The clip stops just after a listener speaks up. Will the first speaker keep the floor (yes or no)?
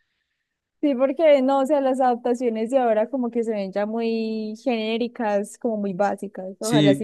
no